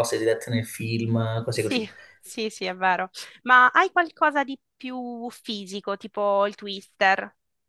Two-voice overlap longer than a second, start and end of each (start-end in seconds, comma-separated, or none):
none